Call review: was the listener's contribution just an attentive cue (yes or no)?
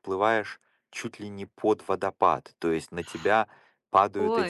yes